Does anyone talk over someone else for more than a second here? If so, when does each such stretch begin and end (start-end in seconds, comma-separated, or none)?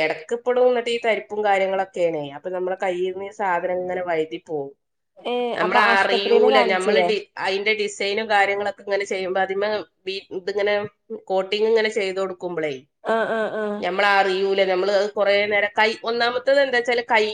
5.6-7.1